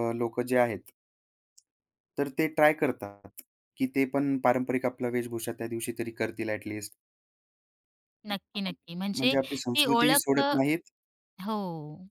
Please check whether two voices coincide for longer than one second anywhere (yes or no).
yes